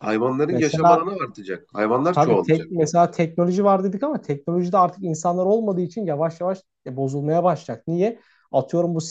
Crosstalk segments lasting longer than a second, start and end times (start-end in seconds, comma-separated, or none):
none